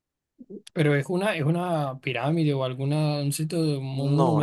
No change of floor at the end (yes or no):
no